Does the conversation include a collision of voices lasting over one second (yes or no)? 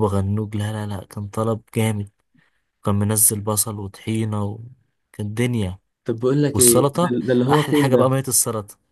yes